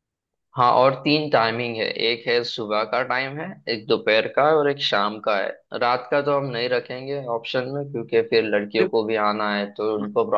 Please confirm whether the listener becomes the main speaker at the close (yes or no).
no